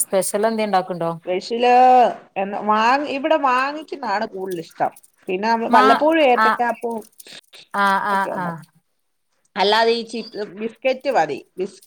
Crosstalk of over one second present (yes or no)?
no